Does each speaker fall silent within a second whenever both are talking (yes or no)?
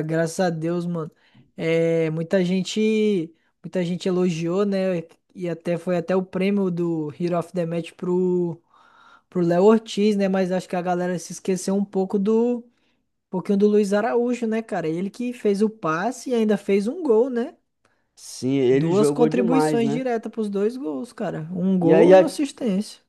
no